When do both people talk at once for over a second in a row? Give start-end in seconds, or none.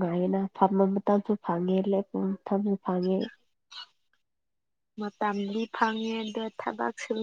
none